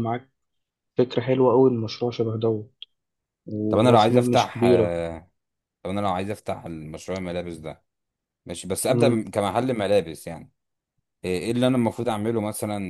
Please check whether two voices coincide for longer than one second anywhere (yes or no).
yes